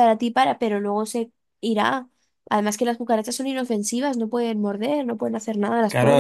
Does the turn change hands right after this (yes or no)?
yes